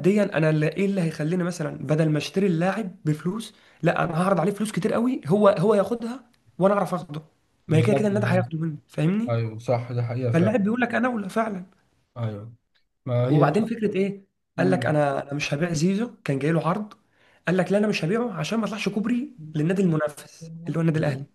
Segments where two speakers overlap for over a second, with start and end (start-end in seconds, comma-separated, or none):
none